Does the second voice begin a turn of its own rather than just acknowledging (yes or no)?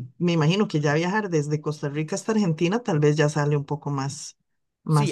yes